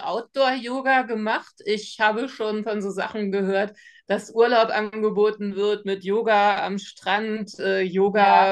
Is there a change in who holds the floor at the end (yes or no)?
no